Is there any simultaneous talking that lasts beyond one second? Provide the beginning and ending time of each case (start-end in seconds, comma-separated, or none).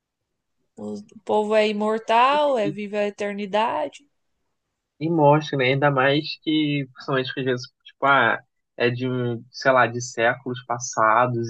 none